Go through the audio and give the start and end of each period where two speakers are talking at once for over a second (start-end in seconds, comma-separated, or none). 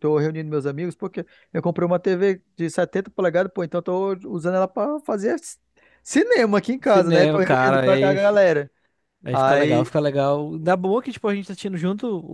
6.8-8.4